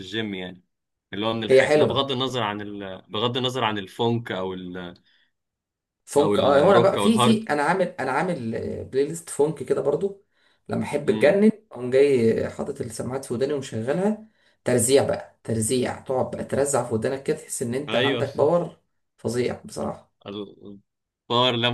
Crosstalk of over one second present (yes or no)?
yes